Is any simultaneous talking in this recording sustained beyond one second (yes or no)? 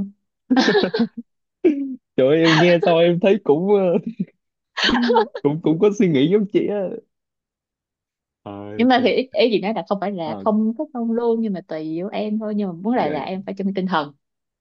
no